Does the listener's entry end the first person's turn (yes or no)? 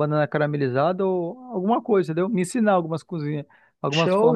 yes